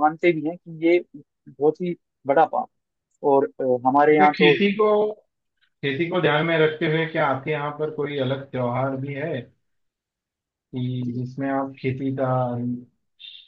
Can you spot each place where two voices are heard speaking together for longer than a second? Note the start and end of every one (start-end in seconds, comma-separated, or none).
none